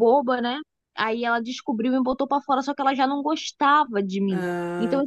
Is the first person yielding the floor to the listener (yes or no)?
no